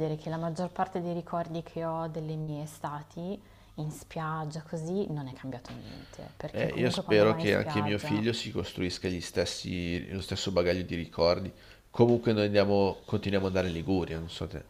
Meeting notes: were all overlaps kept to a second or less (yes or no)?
no